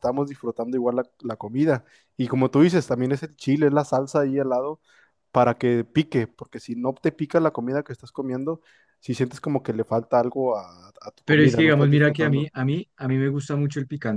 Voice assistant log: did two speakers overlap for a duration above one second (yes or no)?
yes